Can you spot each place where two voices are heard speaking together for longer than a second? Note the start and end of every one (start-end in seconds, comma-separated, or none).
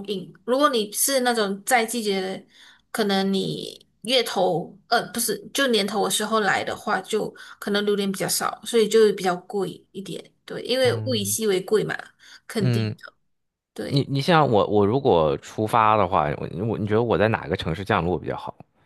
none